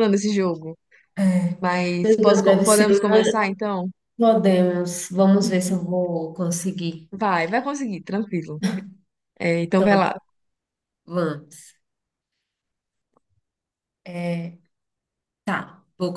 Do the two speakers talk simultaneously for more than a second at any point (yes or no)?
yes